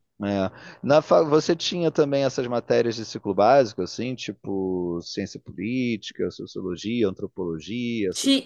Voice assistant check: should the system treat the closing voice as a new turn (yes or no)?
yes